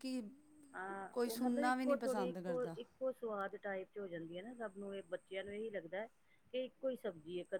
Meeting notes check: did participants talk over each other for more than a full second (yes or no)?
yes